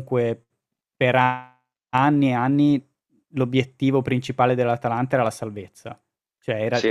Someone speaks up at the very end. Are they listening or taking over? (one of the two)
listening